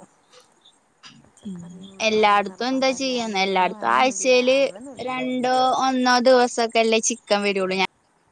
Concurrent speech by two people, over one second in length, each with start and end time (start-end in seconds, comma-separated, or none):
1.7-4.6